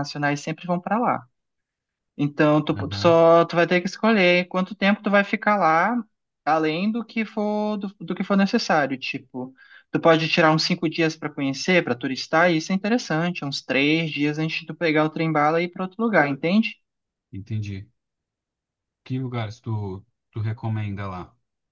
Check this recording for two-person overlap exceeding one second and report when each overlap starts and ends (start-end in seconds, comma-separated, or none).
none